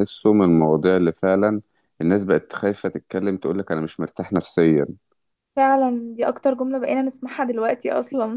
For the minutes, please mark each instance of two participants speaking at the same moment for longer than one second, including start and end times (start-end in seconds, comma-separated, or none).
none